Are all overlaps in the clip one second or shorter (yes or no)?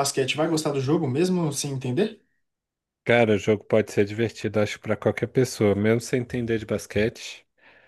yes